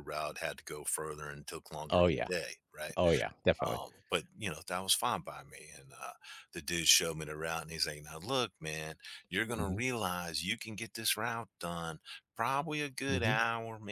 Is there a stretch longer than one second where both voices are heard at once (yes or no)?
no